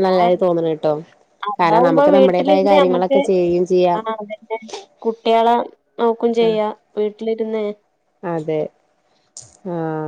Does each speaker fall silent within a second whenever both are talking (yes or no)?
no